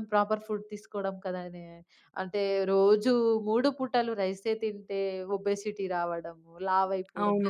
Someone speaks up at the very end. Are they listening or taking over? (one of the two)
listening